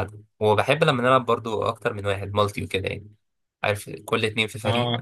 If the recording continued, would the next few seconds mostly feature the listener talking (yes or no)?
yes